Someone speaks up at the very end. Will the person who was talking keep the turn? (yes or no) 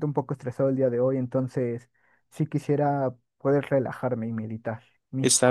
no